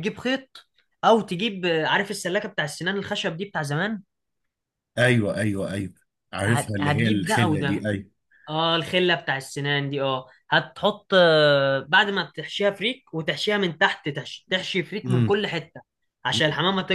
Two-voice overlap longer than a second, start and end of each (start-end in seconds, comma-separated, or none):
6.5-7.9